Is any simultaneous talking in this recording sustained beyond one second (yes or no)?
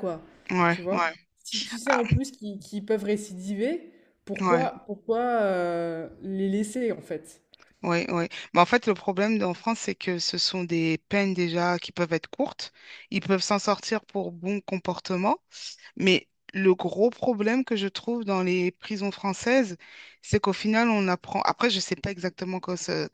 no